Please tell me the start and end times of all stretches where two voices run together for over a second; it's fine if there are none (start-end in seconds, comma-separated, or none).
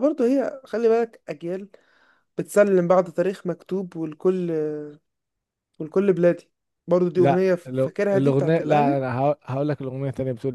7.2-9.0